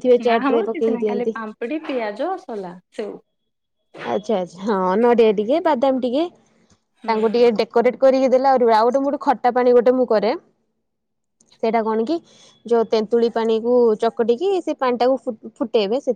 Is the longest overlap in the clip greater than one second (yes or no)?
no